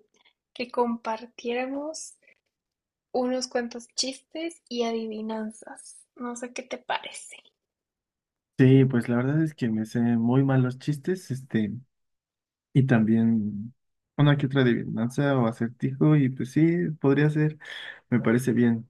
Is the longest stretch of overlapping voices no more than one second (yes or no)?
yes